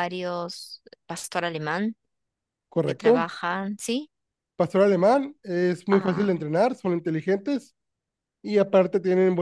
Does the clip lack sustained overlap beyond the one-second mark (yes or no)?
yes